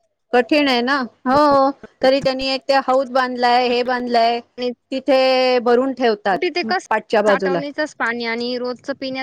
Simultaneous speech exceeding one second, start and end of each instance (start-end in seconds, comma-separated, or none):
none